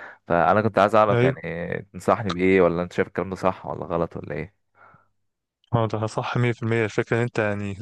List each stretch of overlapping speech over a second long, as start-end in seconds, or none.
none